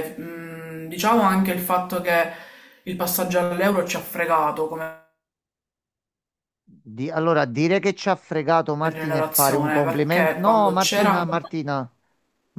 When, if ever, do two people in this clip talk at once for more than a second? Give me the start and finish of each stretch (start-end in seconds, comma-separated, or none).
8.8-11.5